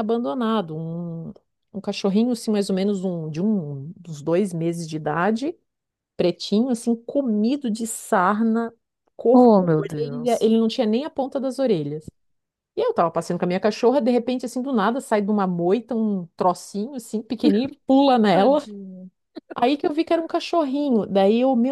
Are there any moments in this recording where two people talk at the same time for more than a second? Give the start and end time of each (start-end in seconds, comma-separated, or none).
9.3-10.5